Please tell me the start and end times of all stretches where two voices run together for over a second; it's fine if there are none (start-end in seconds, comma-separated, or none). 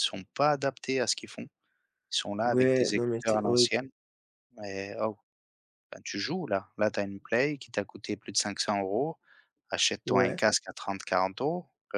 2.4-3.7